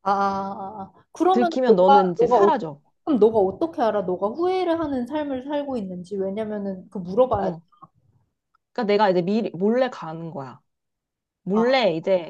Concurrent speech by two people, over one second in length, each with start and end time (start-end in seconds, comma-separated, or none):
1.3-2.5